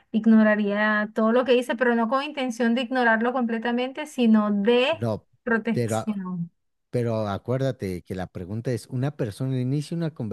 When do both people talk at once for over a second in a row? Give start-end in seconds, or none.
none